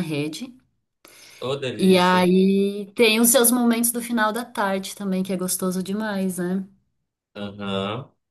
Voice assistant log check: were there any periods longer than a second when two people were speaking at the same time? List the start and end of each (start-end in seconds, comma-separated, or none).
none